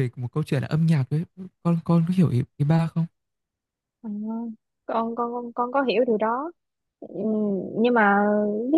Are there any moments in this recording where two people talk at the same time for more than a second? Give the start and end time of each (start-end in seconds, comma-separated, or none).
none